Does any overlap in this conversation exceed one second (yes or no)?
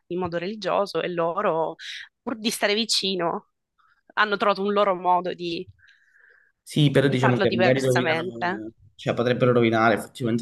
yes